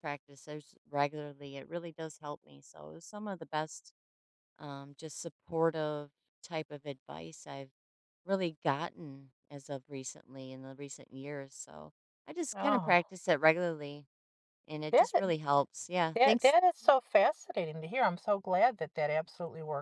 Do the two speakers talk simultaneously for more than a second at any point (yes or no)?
no